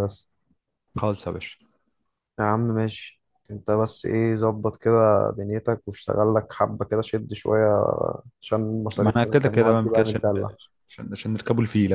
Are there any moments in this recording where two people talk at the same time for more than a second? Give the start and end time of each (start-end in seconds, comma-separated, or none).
9.0-10.2